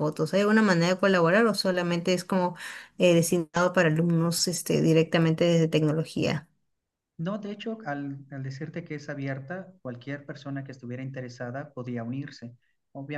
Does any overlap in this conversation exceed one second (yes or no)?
no